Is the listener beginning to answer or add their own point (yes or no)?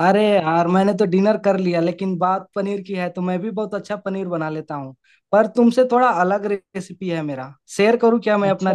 yes